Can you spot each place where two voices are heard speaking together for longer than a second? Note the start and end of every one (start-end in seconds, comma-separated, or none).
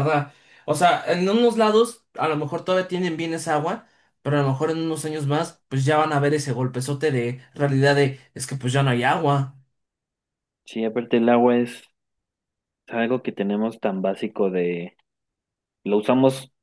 none